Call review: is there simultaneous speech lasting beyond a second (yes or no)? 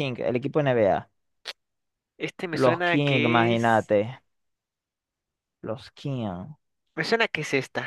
yes